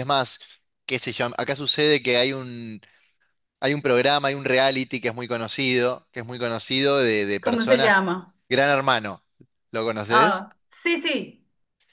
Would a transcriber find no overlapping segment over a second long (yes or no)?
yes